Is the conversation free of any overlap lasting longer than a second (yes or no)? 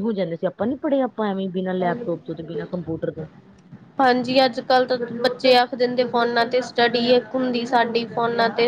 yes